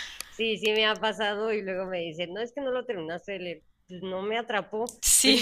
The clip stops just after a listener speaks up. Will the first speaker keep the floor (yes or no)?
yes